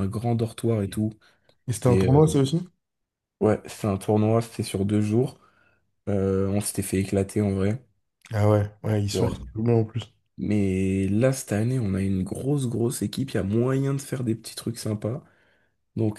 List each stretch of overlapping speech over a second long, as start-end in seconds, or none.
none